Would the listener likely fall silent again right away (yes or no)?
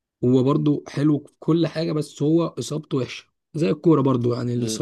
yes